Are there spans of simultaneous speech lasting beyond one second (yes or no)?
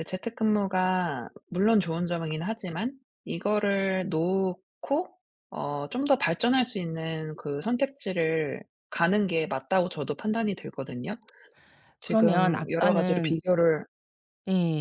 yes